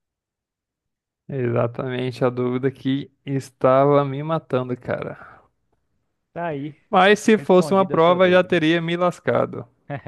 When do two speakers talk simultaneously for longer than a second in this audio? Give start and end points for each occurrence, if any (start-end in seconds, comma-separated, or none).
7.3-8.6